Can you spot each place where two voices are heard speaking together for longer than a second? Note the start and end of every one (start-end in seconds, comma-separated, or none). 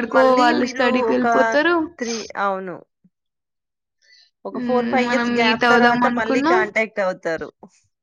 4.5-6.6